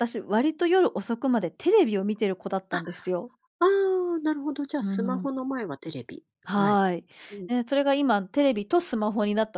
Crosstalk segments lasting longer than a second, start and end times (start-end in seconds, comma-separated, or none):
none